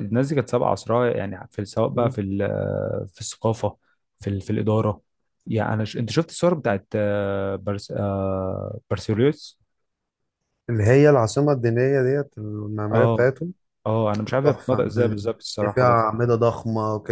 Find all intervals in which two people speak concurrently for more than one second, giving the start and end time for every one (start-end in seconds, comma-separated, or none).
14.4-16.1